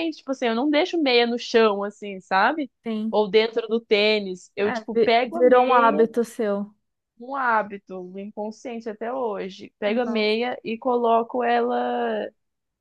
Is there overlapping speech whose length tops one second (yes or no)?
yes